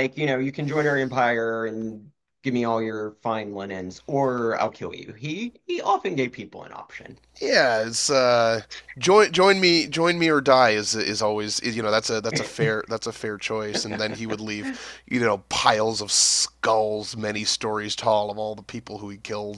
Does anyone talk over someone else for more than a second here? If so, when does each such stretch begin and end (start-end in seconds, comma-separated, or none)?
none